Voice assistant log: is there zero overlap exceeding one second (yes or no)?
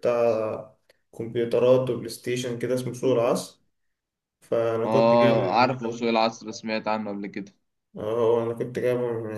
no